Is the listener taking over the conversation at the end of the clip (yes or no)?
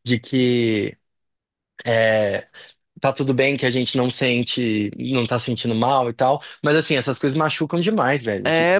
yes